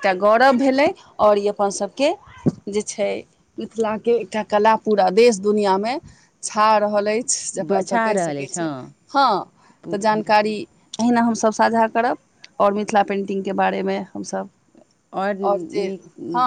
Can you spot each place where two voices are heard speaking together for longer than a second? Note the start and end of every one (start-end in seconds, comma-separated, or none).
7.6-8.9